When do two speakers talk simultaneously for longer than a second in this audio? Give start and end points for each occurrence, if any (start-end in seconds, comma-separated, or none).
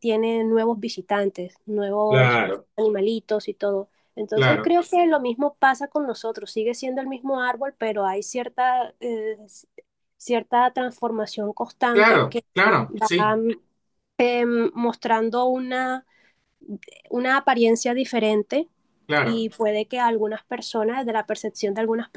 none